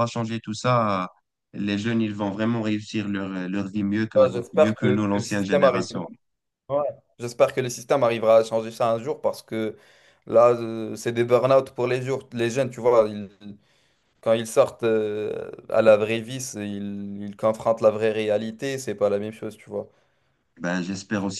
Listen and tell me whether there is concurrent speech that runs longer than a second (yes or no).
yes